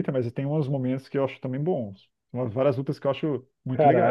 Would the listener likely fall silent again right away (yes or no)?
no